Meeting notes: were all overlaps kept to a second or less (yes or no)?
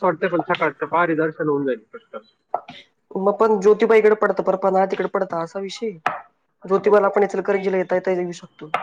yes